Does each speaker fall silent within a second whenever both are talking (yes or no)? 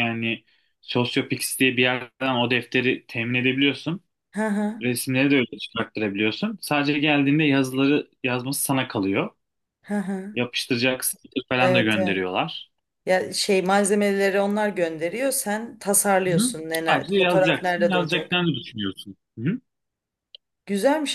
no